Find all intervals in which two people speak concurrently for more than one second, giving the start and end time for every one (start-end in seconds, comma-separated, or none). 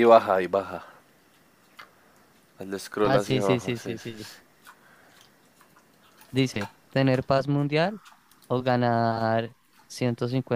3.0-4.3